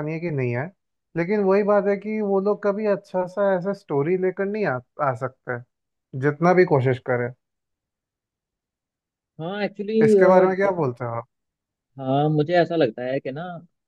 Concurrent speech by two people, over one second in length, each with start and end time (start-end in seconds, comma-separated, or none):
none